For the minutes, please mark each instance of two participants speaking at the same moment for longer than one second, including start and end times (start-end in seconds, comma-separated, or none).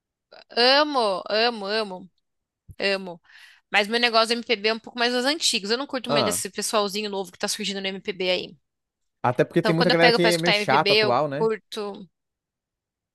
9.6-11.5